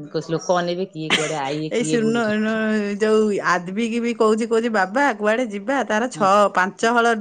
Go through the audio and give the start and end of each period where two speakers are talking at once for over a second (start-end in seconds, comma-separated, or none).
none